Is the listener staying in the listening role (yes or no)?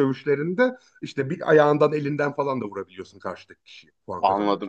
no